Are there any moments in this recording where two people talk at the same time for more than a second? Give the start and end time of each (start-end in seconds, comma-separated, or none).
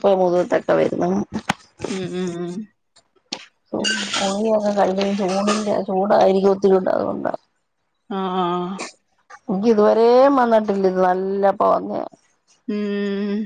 none